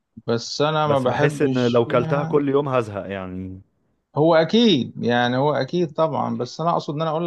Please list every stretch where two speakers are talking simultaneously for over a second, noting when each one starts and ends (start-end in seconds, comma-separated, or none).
0.8-2.4